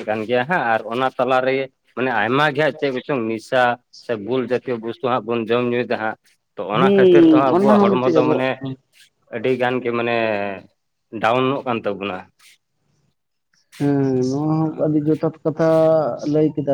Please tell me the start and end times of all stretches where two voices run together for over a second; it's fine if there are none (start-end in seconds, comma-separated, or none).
6.7-8.5